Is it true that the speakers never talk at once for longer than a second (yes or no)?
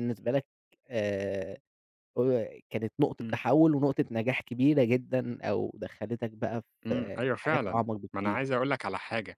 no